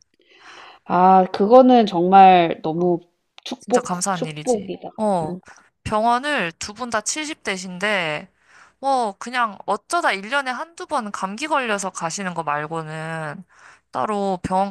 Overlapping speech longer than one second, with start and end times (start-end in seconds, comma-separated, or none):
3.6-5.4